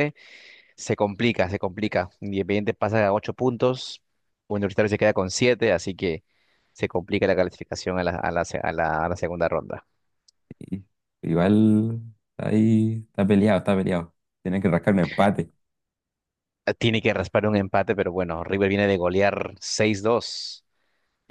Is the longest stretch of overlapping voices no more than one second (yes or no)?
yes